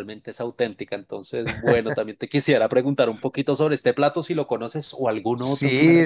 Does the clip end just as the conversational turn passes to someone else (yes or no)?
yes